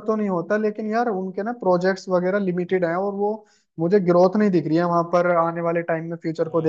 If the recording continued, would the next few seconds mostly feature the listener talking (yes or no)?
yes